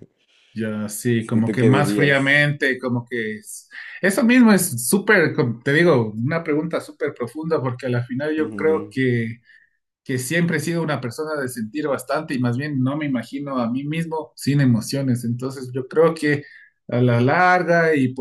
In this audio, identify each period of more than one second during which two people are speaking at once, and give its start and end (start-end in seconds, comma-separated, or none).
1.2-2.5